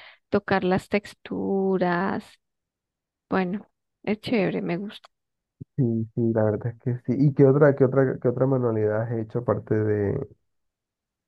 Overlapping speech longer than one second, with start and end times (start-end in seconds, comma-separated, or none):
none